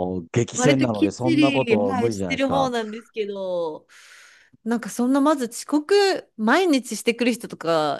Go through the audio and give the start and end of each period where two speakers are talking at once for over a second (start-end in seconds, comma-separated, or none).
0.6-2.7